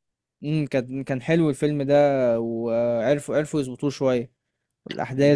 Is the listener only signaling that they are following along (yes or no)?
yes